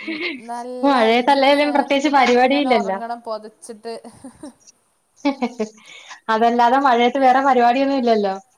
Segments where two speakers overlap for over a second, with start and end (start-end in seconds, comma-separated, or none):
0.9-3.0